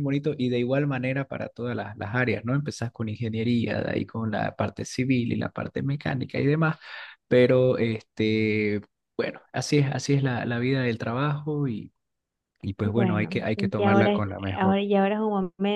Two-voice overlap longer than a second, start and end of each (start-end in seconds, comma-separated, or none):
12.9-14.8